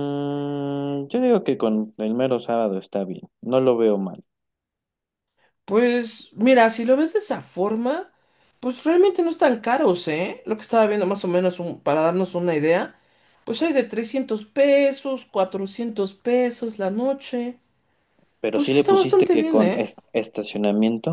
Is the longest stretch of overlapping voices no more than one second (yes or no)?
no